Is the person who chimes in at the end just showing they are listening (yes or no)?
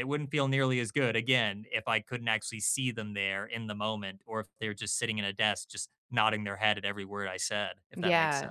no